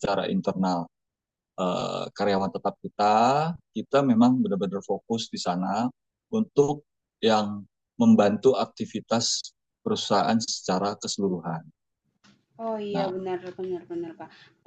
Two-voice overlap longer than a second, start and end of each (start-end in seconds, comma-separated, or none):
none